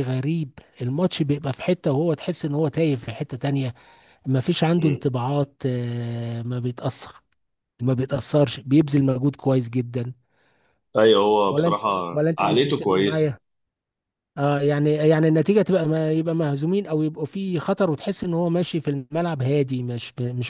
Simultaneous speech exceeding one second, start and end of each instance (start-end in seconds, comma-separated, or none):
11.5-13.3